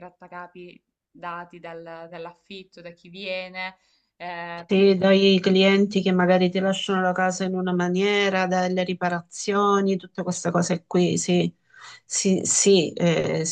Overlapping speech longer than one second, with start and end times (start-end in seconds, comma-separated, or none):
none